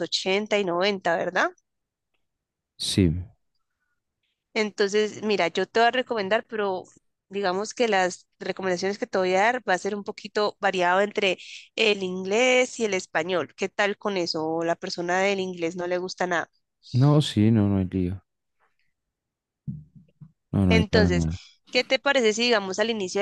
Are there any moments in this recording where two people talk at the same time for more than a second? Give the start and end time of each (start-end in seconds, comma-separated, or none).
none